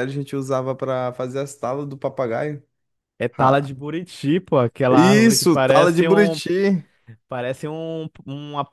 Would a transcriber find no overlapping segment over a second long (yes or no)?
no